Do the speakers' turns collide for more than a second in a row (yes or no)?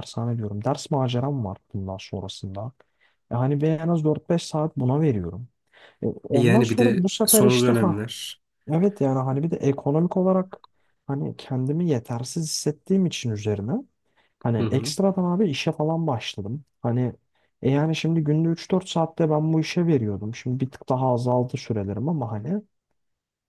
yes